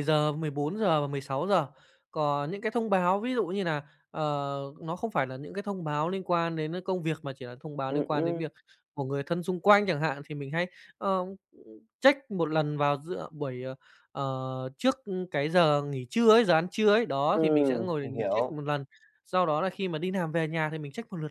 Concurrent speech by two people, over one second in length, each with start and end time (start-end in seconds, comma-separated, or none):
17.3-18.6